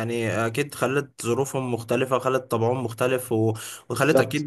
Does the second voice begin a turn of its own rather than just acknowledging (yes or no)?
no